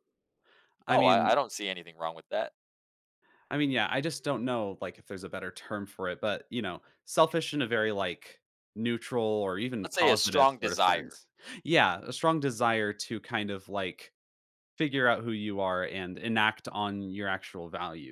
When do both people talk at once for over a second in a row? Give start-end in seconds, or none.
9.8-11.2